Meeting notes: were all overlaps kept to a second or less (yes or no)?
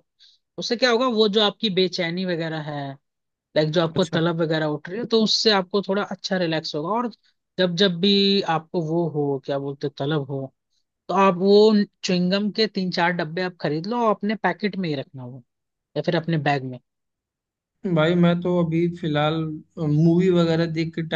yes